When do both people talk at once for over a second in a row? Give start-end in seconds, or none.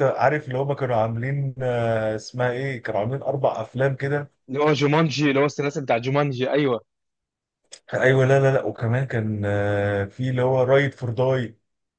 none